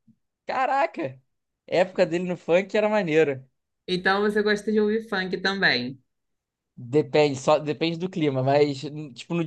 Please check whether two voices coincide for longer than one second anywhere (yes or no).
no